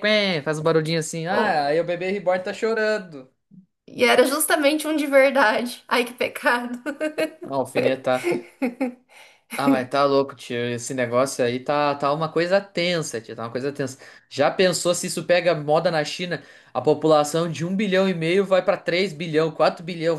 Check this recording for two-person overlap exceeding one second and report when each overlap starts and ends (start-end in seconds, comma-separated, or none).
none